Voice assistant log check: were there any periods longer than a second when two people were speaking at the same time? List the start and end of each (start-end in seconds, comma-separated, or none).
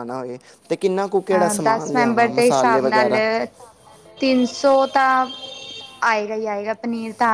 1.6-3.1